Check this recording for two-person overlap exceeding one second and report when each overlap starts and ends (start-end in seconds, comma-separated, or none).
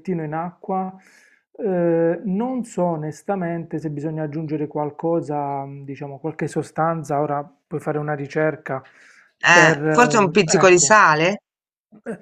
9.5-11.0